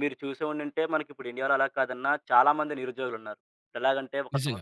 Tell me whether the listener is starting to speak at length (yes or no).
no